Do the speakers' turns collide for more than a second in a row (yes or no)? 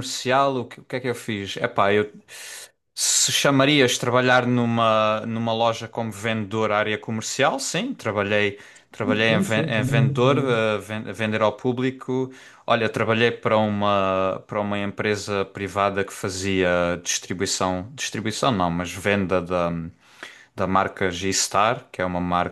yes